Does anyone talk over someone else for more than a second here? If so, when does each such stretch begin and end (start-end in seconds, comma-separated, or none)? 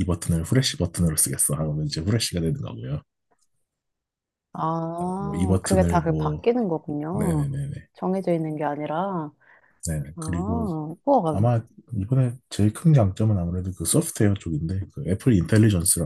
5.2-6.4